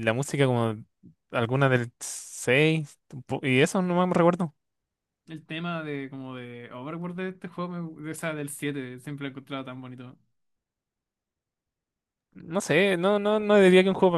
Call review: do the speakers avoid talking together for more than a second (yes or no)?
yes